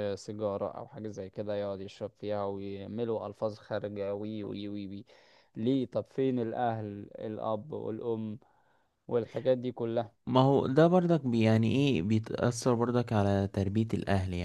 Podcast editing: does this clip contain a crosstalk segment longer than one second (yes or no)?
no